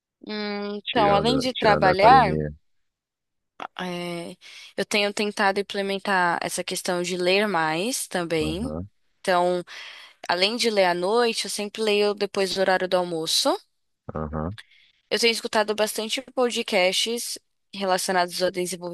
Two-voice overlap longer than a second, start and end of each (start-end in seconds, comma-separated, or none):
0.9-2.4